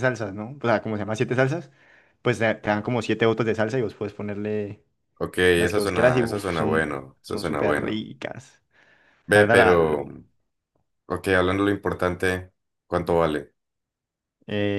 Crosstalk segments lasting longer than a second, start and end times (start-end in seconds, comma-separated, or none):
5.5-8.1